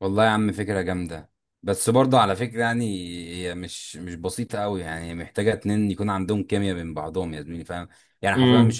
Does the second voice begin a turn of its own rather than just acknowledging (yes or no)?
no